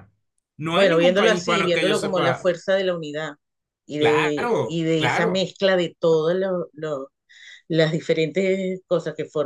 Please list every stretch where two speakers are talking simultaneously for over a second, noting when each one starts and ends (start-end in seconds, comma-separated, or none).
0.7-2.5, 4.0-5.5